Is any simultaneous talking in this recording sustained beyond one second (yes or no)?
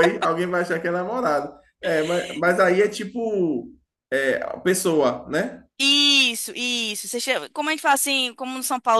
no